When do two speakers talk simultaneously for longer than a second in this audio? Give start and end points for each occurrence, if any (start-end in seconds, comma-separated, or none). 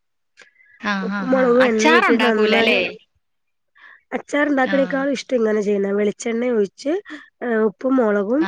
1.1-2.8